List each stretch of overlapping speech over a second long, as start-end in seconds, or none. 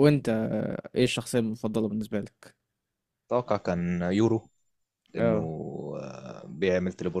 none